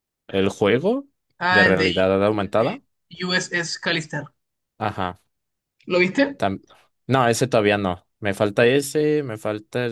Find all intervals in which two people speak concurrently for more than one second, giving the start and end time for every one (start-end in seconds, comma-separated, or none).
1.5-2.8